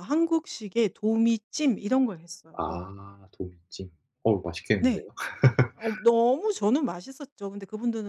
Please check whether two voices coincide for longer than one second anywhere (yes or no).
no